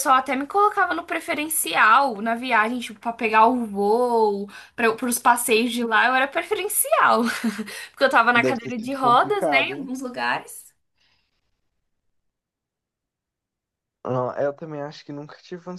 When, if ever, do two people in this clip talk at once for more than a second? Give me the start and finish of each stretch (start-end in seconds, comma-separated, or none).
8.3-9.9